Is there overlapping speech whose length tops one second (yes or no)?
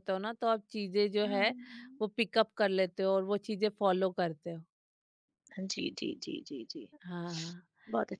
no